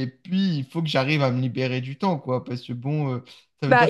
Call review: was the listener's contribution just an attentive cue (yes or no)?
no